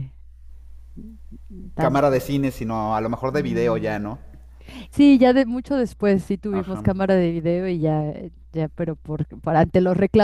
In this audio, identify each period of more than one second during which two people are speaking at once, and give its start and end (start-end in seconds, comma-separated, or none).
none